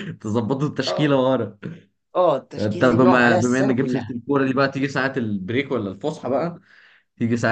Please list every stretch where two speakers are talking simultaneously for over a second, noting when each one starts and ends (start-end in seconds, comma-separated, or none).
2.6-4.1